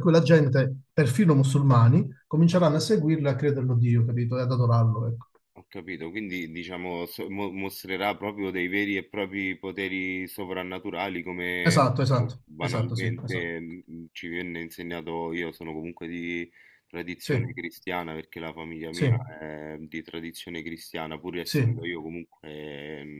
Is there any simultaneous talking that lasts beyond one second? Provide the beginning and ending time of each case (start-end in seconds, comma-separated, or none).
11.6-13.5